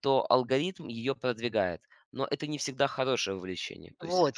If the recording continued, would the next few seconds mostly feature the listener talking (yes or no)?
yes